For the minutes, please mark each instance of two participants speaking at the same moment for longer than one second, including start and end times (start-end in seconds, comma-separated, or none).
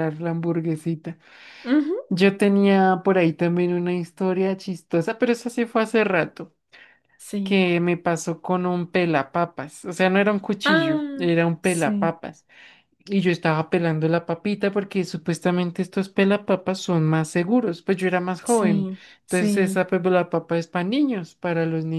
10.6-12.2, 18.4-19.8